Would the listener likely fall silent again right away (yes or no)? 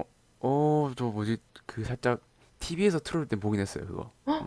no